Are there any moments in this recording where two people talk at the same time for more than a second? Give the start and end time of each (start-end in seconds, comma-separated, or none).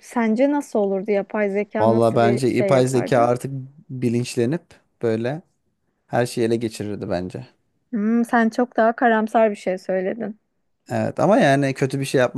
1.8-3.4